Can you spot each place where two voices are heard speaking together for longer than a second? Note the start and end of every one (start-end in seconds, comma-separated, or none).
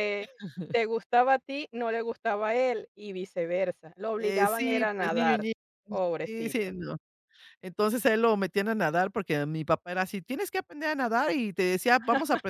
4.2-5.5